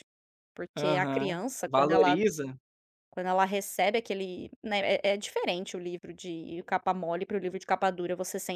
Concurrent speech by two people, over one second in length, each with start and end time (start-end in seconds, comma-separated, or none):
0.8-2.1